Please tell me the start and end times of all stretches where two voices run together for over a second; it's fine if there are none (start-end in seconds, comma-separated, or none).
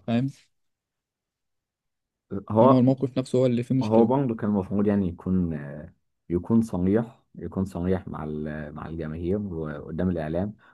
none